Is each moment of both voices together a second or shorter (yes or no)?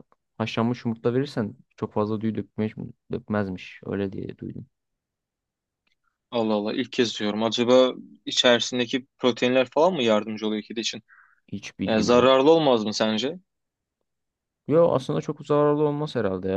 yes